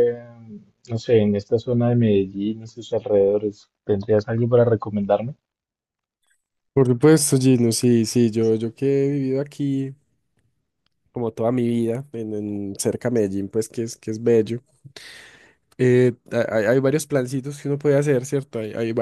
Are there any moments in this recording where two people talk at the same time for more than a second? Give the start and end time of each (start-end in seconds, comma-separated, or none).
none